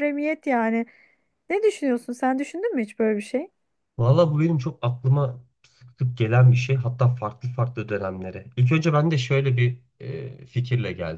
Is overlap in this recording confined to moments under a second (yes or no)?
yes